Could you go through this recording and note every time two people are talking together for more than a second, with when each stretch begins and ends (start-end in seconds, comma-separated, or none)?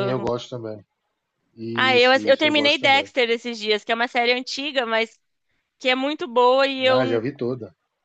1.8-3.1